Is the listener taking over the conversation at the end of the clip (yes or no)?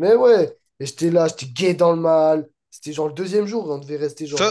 yes